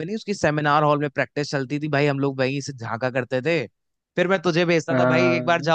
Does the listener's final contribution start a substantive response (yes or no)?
no